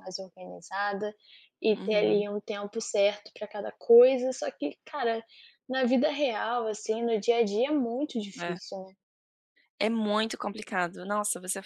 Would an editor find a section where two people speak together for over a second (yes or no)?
no